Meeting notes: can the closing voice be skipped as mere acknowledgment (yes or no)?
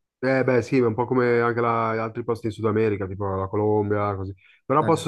yes